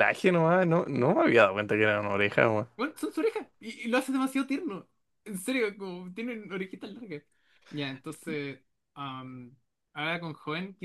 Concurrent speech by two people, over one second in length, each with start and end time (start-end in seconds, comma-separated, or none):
none